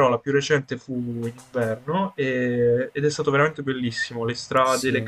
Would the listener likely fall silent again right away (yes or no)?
yes